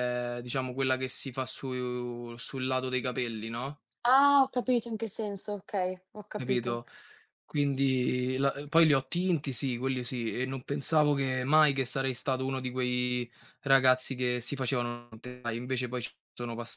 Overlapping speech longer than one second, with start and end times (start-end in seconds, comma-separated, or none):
none